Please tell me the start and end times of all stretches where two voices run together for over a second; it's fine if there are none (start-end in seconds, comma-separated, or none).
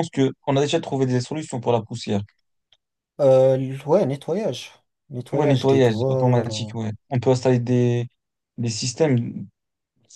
5.3-6.7